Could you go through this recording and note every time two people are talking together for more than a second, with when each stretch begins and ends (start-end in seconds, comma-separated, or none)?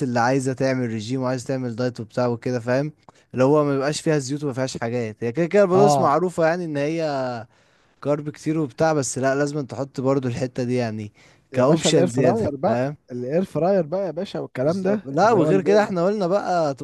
11.5-13.0, 14.6-15.9